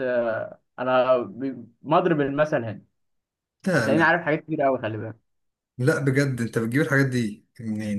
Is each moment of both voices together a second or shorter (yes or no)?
yes